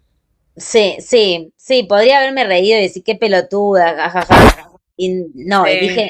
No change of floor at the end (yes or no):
yes